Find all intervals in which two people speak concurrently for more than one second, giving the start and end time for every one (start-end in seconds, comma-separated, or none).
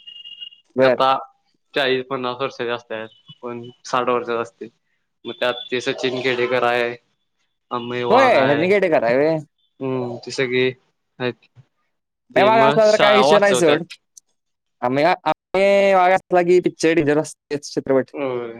12.3-13.8